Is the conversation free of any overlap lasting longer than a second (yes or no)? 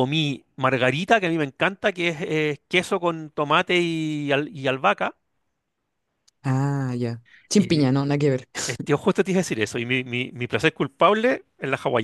yes